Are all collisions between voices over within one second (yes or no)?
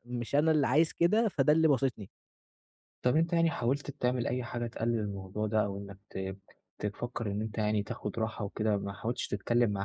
yes